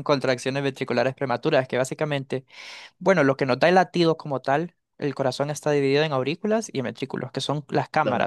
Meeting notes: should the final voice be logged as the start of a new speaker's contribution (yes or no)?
no